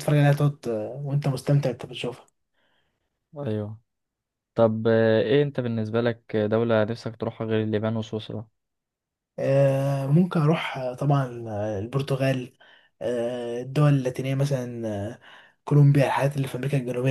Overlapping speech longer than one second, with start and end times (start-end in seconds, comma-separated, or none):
none